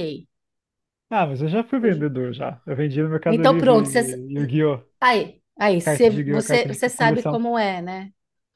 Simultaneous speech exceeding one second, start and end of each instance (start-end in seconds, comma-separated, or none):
5.8-7.4